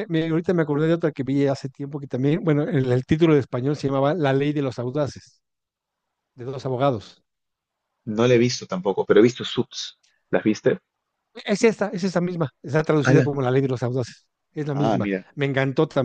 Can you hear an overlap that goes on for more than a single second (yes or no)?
no